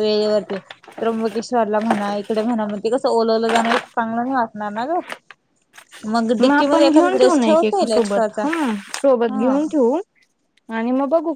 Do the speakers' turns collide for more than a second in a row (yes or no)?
yes